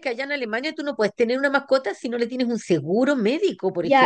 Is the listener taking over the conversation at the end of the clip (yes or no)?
yes